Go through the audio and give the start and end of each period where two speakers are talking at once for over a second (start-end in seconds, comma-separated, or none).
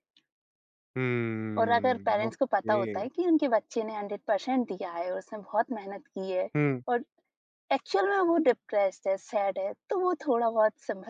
1.6-3.1